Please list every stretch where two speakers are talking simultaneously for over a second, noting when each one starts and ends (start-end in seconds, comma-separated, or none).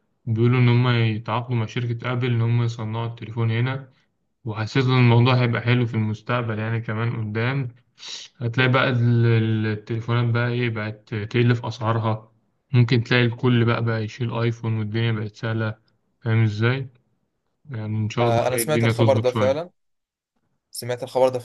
18.2-19.6